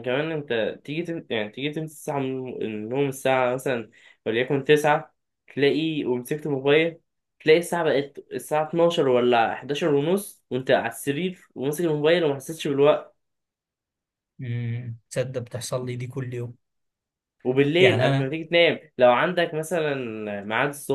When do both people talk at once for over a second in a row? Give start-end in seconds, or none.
none